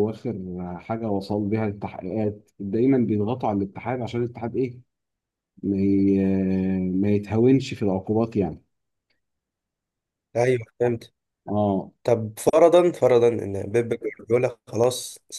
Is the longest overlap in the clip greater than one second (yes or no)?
no